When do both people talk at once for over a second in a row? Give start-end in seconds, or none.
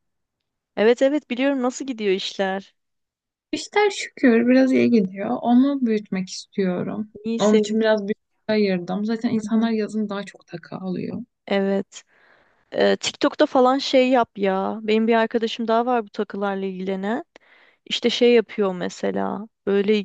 none